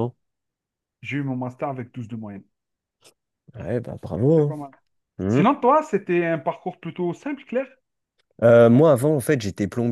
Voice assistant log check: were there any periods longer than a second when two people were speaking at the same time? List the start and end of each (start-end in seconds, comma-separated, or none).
none